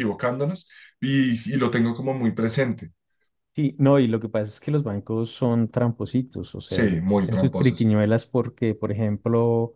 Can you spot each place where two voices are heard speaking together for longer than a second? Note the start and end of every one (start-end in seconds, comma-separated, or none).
6.7-7.9